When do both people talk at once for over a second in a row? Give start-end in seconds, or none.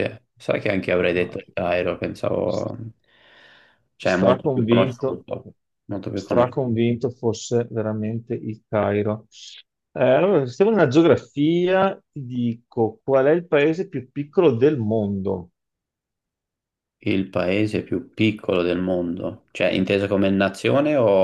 4.0-5.2